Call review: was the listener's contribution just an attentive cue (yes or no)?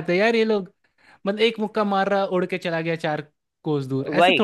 no